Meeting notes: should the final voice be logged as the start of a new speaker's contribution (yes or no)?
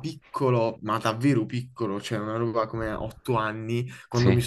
no